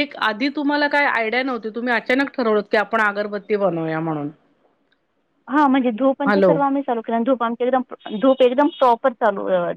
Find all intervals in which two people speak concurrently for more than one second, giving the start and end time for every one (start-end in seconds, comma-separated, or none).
none